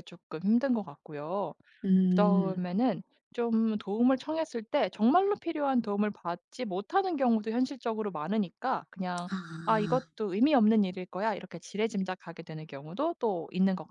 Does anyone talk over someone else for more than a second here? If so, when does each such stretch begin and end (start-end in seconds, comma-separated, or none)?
none